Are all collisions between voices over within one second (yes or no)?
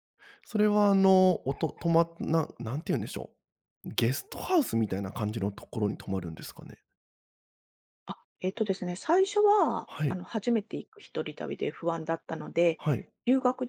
yes